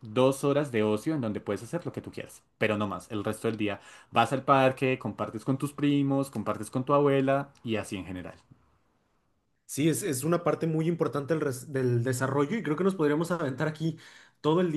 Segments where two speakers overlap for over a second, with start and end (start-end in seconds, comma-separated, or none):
none